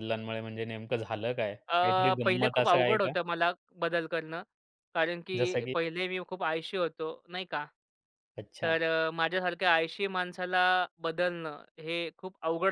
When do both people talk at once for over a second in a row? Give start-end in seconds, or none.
1.7-3.1